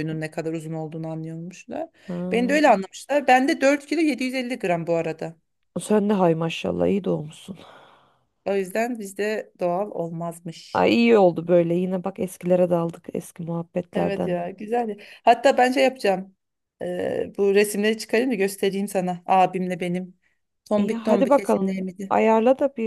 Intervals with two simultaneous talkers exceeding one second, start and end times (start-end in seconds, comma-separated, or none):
20.8-22.1